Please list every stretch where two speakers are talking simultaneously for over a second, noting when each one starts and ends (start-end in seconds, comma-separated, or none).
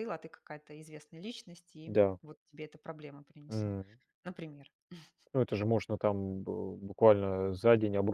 none